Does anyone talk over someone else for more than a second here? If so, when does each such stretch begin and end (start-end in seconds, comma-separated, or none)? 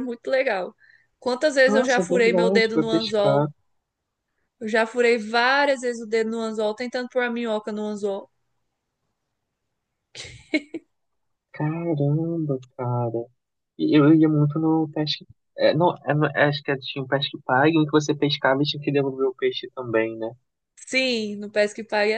1.6-3.5